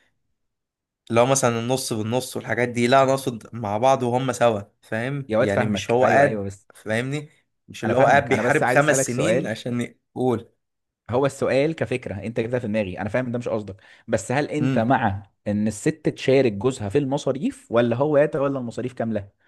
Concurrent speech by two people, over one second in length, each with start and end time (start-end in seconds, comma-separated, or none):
5.3-6.7, 7.8-9.6